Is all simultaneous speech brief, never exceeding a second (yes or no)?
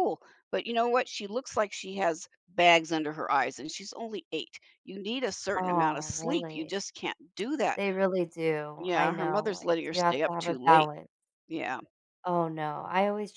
no